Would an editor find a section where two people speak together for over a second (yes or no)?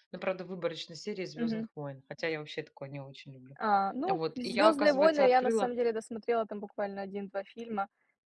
yes